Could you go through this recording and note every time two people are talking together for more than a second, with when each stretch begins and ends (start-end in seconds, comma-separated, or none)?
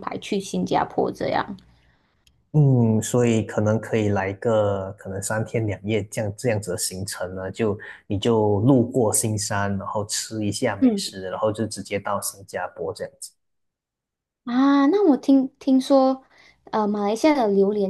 none